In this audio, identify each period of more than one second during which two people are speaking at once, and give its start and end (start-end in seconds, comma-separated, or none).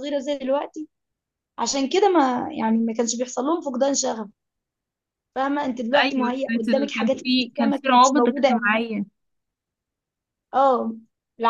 6.0-8.8